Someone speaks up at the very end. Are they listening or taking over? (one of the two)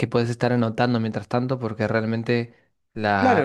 taking over